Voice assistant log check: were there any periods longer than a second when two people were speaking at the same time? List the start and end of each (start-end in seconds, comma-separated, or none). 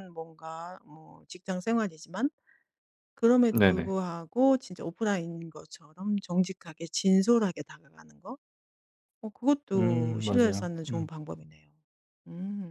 9.7-11.1